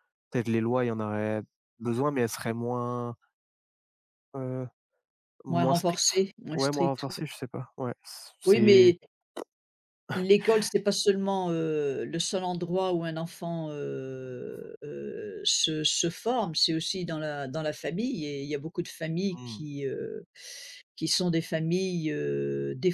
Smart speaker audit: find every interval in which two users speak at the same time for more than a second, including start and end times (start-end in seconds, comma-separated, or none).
5.5-7.2